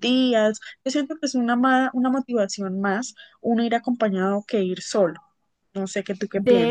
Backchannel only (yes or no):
no